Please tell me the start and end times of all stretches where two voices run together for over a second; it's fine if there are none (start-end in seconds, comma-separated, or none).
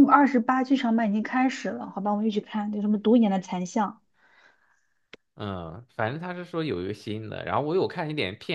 none